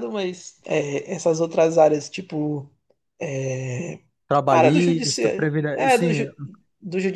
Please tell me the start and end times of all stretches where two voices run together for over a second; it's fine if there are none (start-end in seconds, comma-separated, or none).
4.5-6.2